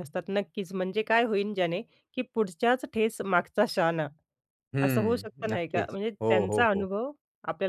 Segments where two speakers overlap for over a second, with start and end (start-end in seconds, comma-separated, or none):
4.8-6.9